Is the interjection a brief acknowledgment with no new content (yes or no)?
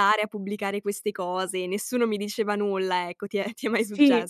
no